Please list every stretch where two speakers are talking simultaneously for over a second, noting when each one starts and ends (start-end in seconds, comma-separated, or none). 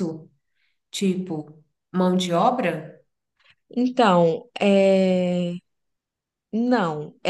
none